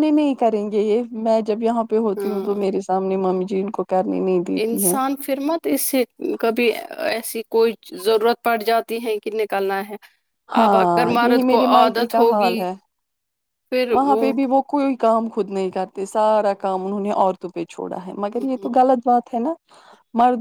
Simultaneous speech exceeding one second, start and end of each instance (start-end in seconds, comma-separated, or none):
10.6-12.6